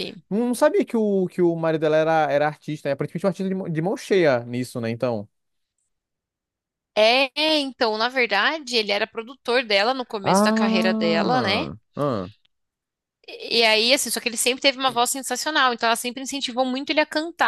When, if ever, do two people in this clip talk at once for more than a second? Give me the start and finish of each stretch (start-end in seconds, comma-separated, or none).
10.2-11.7